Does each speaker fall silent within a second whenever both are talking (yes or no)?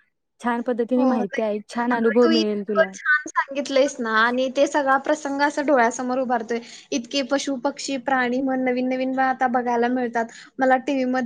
no